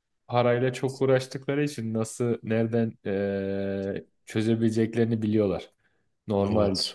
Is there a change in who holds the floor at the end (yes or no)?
no